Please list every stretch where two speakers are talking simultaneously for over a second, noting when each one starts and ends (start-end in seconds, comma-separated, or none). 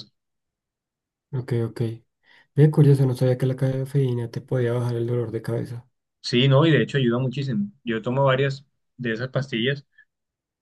none